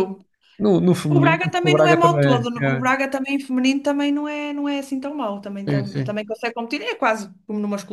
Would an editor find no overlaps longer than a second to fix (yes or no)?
no